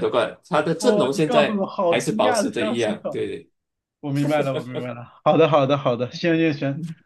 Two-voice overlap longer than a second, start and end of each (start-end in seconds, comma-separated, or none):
0.8-3.2